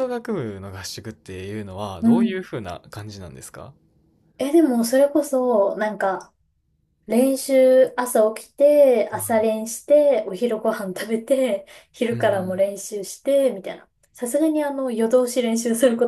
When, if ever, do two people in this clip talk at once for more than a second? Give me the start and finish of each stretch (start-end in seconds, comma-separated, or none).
none